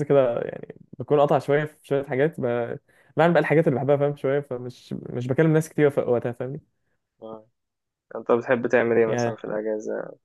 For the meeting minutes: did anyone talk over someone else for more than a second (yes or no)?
no